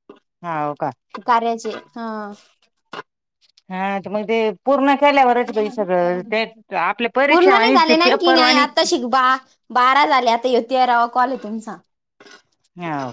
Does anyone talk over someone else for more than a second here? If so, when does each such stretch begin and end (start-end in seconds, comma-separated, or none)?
7.3-8.7